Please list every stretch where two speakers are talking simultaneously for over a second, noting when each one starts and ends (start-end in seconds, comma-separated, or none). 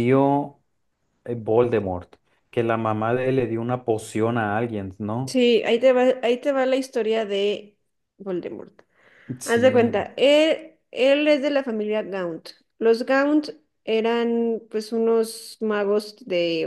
none